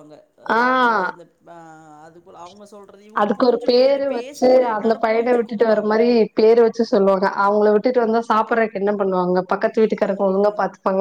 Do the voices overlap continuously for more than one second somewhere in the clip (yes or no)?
yes